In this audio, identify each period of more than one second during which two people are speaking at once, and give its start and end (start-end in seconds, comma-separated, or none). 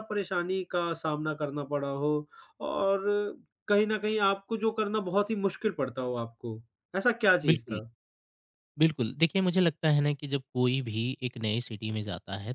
none